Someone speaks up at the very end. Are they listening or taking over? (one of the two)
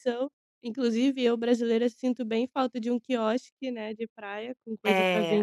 taking over